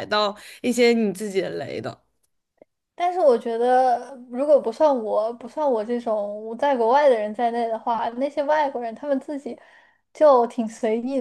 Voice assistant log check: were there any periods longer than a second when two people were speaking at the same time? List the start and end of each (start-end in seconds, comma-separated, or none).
none